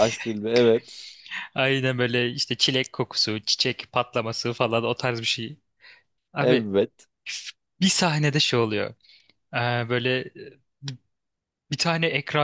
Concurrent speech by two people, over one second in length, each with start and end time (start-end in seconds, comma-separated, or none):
none